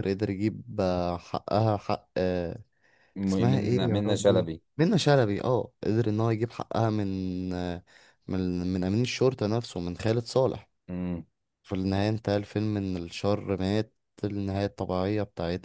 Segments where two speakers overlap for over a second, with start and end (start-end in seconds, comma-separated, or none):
3.3-4.6